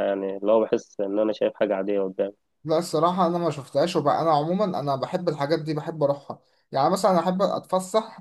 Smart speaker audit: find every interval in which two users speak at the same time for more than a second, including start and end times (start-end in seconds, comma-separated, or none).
none